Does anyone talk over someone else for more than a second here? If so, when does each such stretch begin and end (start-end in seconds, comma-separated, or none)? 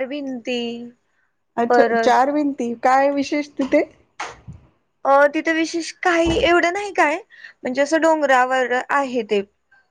none